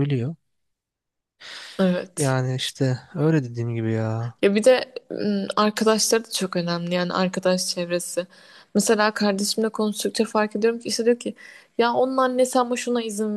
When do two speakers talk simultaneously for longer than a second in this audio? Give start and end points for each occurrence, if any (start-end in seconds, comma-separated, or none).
none